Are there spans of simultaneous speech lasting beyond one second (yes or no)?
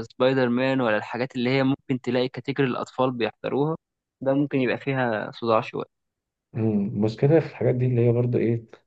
no